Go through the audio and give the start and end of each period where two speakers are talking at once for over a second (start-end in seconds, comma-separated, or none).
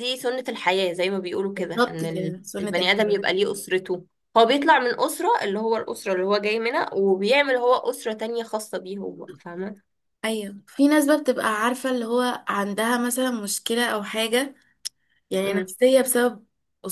1.6-3.2